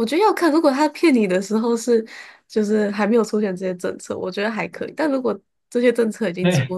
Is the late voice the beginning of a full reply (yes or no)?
no